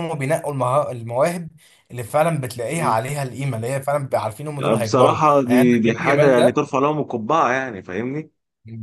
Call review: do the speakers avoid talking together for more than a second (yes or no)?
no